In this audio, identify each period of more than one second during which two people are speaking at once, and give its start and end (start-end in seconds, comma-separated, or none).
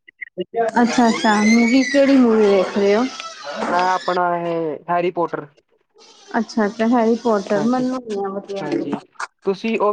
7.6-9.0